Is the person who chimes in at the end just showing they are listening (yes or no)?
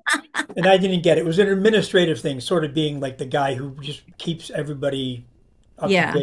yes